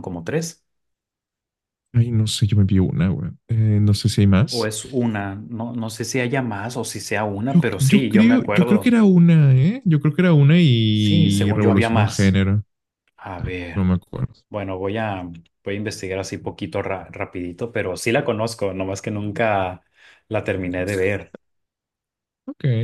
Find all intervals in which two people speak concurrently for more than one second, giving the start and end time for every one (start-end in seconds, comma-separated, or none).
7.5-9.0, 10.9-12.4